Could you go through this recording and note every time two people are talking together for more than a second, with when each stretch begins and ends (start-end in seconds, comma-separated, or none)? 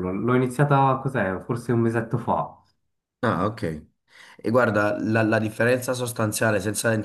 none